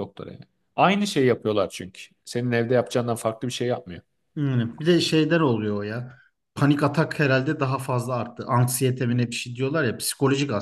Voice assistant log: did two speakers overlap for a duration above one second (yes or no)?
no